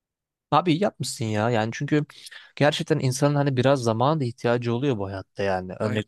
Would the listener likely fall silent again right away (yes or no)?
yes